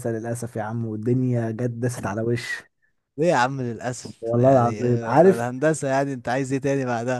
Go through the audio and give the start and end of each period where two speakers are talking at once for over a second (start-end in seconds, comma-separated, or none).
4.2-5.4